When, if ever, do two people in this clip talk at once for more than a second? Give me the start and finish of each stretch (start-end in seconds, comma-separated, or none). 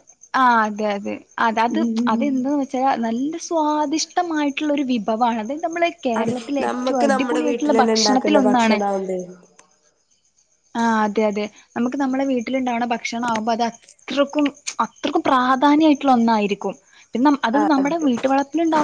6.2-8.8